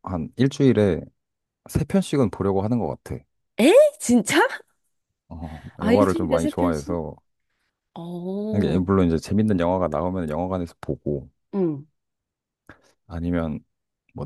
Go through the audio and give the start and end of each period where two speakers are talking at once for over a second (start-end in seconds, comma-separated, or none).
5.8-7.0